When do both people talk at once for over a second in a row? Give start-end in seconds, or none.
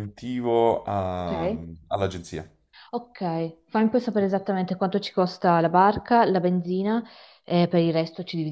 none